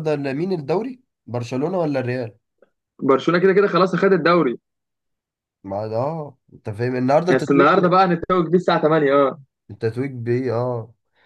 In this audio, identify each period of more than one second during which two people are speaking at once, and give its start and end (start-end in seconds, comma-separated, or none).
none